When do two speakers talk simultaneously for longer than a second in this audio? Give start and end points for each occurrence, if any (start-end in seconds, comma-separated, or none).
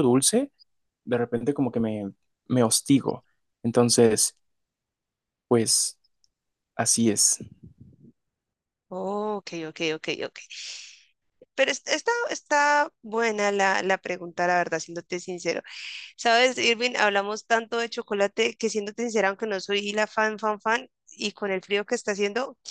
none